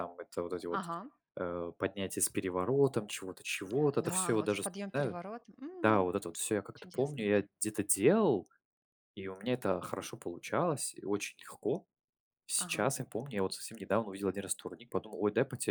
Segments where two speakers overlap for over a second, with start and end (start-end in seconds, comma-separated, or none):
4.0-5.2